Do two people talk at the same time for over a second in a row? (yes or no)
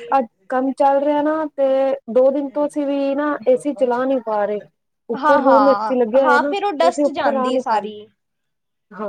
yes